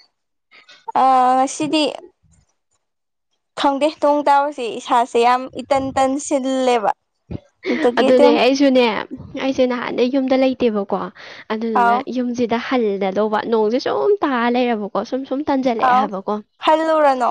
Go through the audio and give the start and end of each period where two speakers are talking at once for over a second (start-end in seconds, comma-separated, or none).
none